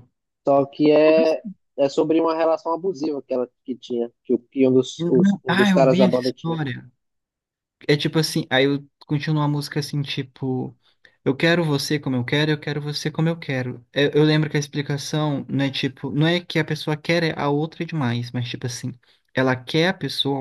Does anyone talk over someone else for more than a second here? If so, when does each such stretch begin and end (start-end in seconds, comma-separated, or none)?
5.0-6.6